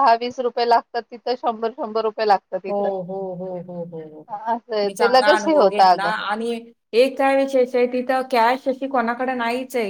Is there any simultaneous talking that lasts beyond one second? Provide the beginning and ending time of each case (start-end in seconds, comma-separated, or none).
4.8-6.1